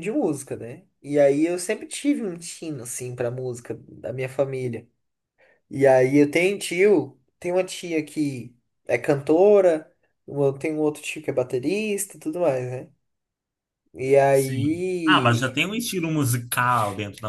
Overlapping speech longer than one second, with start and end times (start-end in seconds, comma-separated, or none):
14.3-15.6